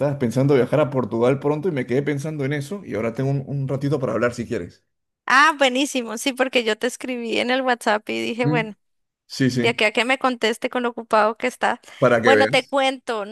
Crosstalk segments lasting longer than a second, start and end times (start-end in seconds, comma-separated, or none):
none